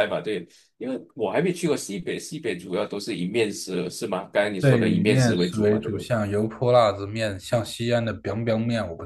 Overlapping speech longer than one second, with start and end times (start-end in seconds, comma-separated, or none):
4.6-6.1